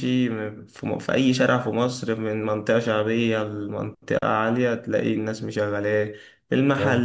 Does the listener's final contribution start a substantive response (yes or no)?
no